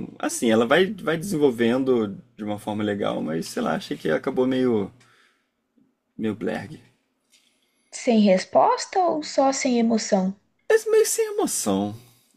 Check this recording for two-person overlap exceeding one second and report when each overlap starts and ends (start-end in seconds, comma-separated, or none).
none